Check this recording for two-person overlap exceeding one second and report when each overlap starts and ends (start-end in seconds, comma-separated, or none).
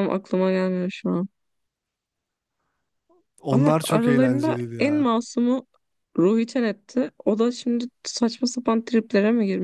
3.5-5.1